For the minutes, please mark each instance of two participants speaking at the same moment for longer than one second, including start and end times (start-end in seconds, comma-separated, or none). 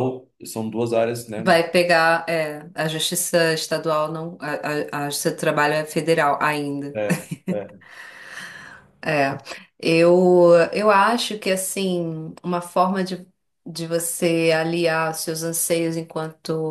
none